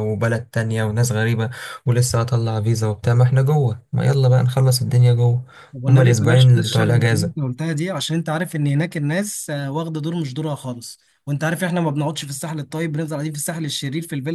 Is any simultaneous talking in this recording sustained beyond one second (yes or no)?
yes